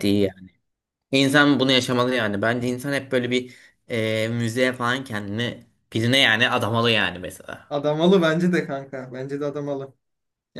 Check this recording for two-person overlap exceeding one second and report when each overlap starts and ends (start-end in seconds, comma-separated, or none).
none